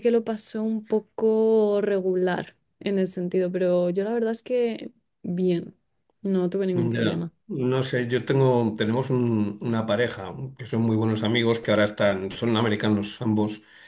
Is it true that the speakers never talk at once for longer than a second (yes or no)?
yes